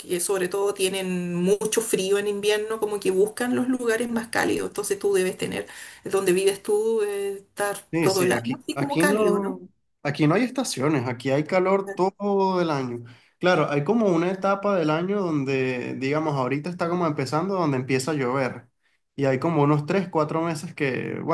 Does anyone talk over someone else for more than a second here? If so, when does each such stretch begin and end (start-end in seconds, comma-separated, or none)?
7.9-9.6